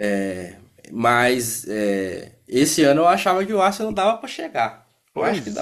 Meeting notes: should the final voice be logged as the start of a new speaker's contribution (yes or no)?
yes